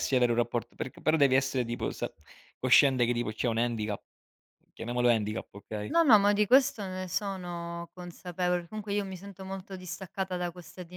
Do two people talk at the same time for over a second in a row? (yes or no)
no